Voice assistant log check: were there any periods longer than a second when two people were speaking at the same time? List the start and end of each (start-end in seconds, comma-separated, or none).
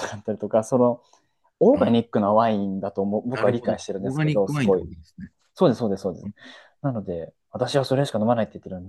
3.3-4.9